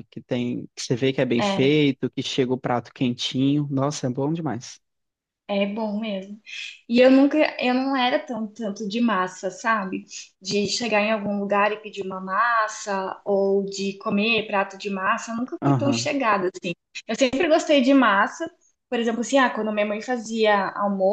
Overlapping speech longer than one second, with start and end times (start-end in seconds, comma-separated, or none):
none